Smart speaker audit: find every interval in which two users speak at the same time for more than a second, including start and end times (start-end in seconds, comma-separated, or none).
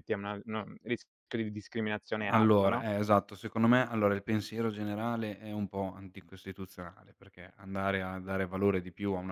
none